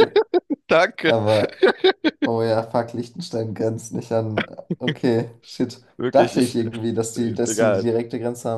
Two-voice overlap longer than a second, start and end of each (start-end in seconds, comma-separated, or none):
6.0-7.9